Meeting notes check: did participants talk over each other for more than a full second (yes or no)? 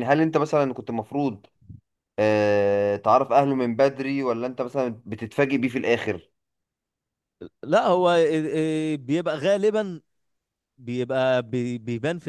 no